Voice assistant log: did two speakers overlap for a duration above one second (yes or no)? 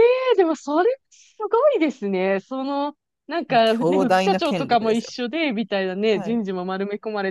yes